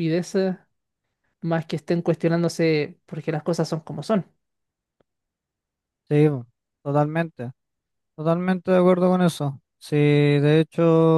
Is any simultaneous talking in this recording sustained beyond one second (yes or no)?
no